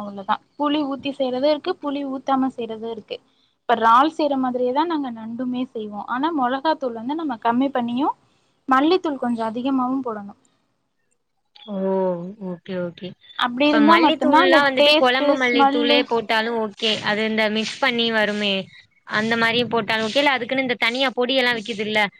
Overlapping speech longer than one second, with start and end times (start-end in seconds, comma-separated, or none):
13.6-16.0